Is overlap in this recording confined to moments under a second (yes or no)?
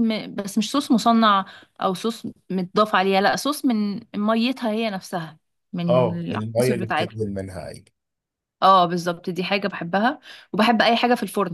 no